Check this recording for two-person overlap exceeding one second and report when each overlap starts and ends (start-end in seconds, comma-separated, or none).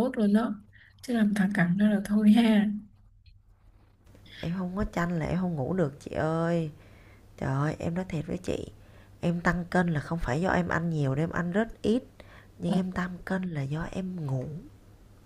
none